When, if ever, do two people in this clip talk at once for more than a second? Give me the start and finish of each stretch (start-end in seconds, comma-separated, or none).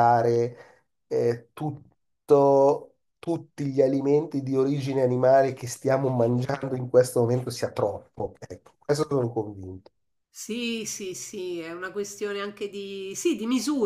none